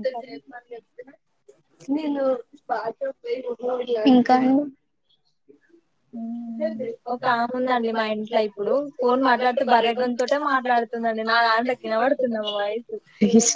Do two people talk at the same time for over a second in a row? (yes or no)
yes